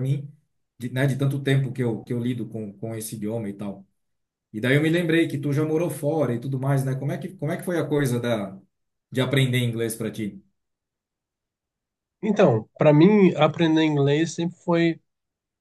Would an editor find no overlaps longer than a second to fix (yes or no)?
yes